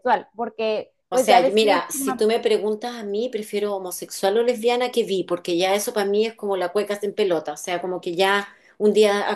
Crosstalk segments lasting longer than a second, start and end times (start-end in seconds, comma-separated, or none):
1.1-2.3